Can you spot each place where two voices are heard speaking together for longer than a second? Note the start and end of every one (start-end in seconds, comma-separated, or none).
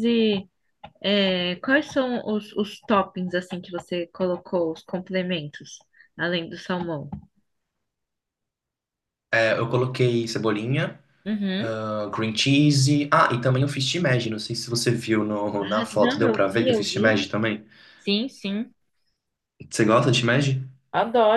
15.6-17.2